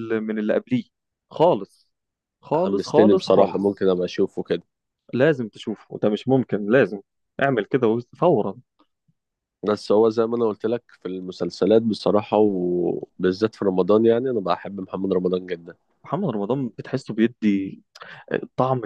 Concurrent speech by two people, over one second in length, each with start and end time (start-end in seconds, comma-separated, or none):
2.5-3.9